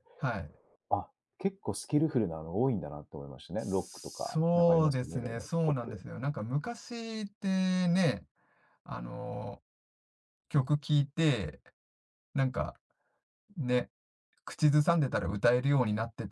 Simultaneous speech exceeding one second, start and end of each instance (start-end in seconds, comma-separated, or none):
3.6-6.0